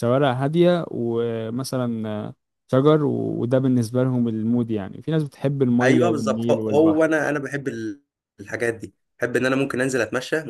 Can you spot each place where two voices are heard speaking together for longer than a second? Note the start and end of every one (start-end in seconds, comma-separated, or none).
5.8-7.0